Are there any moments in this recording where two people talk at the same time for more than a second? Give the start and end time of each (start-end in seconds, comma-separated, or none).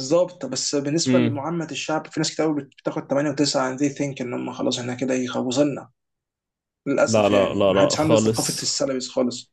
7.0-8.7